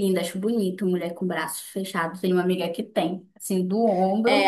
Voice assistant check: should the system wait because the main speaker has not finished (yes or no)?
no